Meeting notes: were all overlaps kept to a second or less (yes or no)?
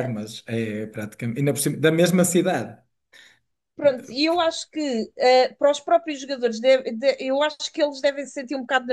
yes